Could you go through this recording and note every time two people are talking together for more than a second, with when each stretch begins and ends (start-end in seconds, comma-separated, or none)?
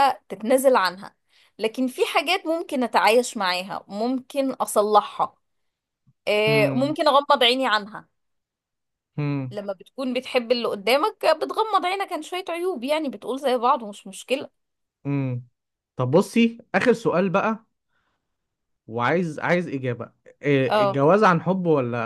none